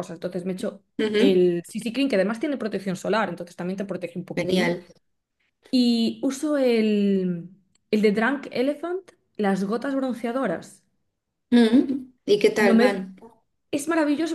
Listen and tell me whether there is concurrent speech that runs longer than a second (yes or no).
no